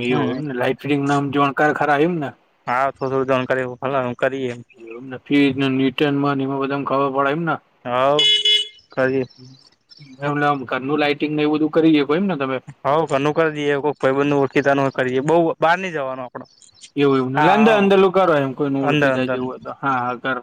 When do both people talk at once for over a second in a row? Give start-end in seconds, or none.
none